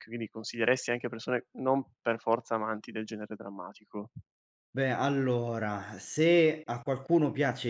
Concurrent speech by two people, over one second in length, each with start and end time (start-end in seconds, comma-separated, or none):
none